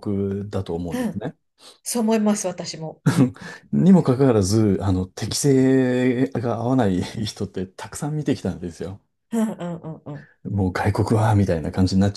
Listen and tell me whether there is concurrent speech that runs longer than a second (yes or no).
no